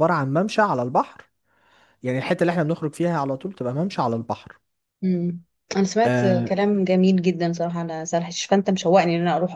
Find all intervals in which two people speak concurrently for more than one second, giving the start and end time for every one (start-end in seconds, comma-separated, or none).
none